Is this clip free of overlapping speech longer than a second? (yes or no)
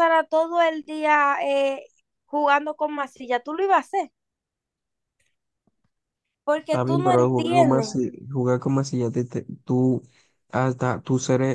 no